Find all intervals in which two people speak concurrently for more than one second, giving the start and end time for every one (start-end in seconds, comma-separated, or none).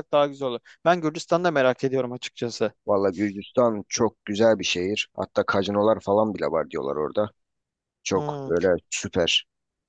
none